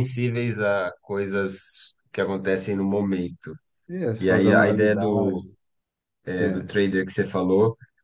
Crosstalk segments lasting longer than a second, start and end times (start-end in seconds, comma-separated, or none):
4.2-5.5